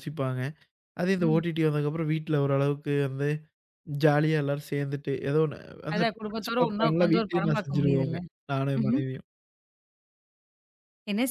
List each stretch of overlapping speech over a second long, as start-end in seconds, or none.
5.9-8.2